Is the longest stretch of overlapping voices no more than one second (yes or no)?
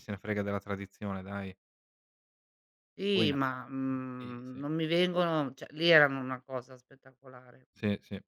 yes